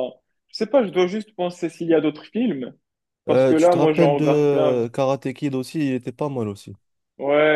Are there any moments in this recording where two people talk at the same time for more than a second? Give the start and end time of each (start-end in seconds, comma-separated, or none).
3.3-4.9